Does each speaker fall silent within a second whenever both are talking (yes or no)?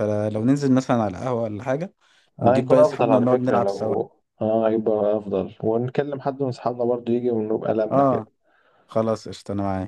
no